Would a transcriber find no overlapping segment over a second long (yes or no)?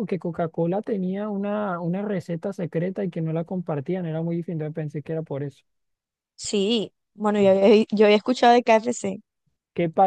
yes